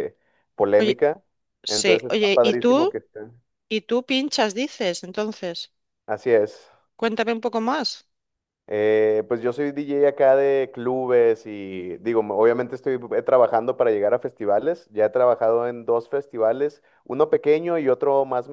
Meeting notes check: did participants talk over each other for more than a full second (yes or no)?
yes